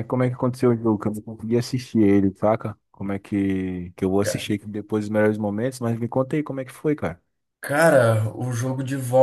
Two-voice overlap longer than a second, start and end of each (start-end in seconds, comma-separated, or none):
none